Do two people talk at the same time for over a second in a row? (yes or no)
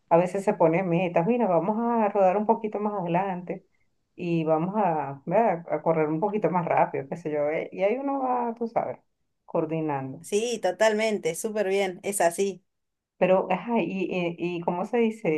no